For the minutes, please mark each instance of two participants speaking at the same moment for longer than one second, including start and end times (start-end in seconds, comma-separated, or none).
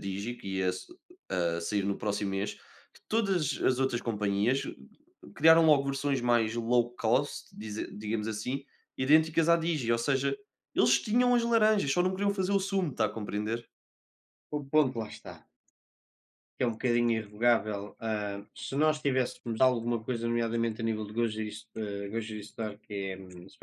none